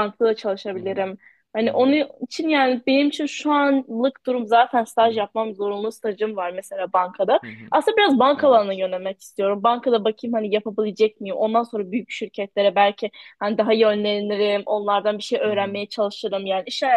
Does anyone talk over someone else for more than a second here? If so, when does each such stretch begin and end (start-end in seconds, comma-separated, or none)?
none